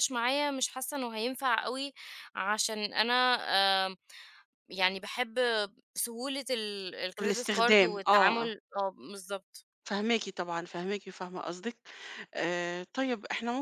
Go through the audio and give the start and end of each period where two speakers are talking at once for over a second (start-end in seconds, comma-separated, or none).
7.2-8.5